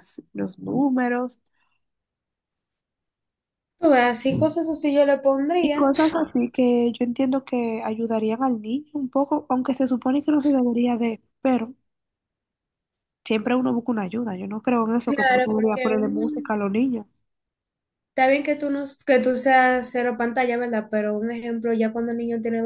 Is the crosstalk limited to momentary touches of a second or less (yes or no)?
no